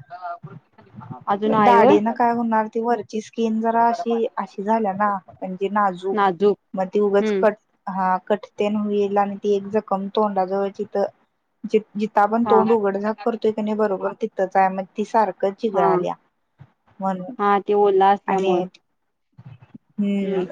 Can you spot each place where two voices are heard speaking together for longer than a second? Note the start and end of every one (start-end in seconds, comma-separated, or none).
none